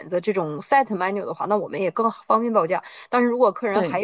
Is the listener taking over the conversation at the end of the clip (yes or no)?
no